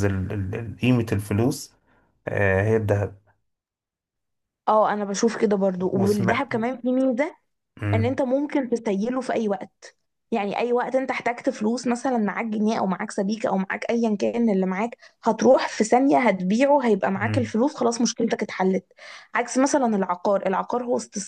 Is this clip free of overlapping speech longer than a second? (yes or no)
yes